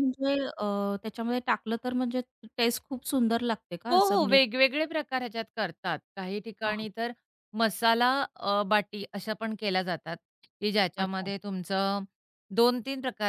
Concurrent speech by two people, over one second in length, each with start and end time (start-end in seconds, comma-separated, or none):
none